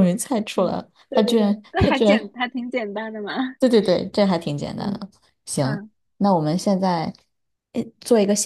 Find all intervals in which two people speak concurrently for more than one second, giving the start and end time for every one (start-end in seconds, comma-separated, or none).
0.6-2.3